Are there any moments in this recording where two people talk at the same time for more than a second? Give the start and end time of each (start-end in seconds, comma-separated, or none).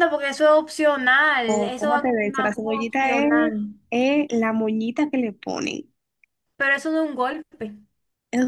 1.5-3.5